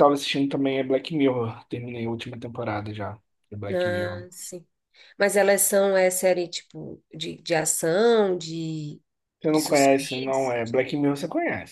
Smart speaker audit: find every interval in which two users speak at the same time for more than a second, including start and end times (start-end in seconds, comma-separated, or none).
9.5-10.8